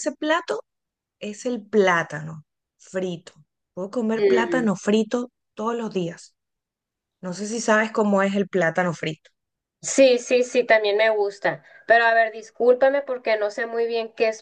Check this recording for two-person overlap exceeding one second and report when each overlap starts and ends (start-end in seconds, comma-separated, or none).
none